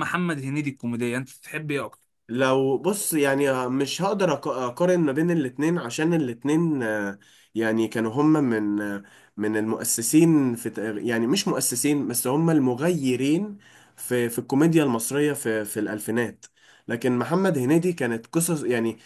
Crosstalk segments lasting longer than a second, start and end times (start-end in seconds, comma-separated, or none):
none